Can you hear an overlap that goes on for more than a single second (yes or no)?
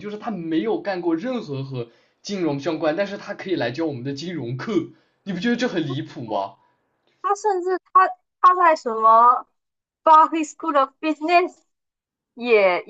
no